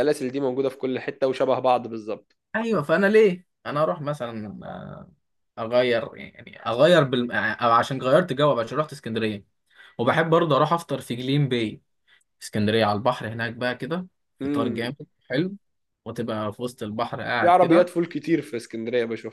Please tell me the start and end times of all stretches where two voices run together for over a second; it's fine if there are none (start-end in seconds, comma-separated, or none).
none